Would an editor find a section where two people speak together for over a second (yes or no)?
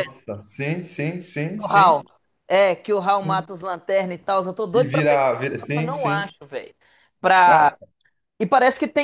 yes